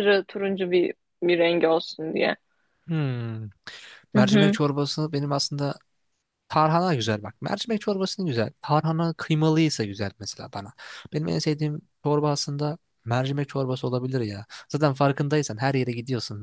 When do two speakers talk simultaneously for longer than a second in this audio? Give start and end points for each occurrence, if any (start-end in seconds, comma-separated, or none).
none